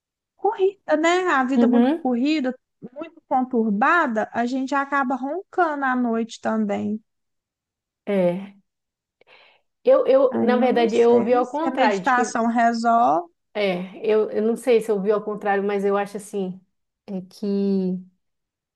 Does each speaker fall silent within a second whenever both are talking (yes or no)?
no